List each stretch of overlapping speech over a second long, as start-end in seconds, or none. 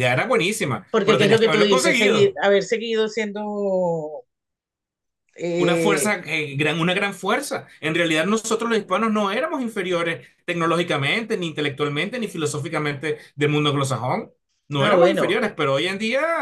0.9-2.4